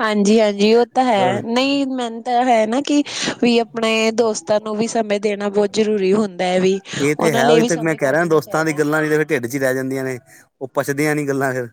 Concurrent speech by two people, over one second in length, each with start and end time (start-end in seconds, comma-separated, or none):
7.2-8.8